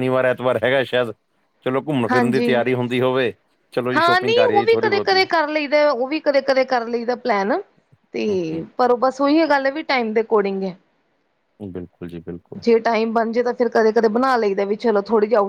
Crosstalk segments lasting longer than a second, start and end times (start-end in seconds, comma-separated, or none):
4.0-5.2